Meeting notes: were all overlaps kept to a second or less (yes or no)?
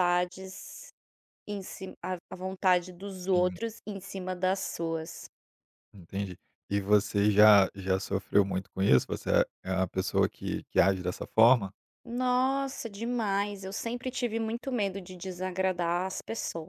yes